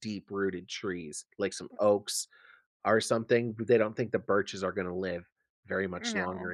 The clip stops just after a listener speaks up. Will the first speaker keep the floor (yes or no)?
yes